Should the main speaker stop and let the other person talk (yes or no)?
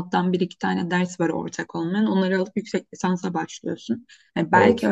no